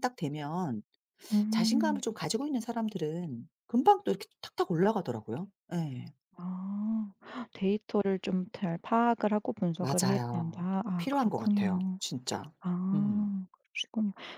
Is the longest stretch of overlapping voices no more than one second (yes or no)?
no